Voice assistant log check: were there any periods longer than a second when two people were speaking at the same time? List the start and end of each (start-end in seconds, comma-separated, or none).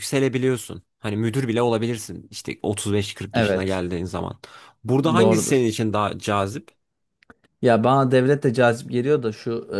none